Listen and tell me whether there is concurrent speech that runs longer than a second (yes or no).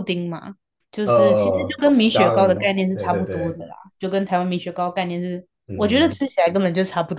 yes